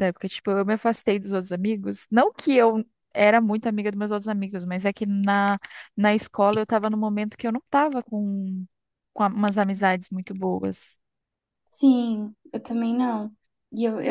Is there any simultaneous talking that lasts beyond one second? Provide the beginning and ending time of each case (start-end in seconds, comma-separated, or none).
none